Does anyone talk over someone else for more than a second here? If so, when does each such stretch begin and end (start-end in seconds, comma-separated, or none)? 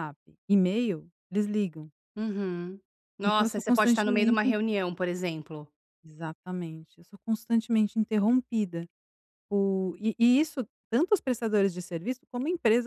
3.2-4.5